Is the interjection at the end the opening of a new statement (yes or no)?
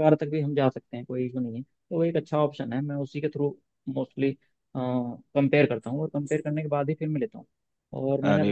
no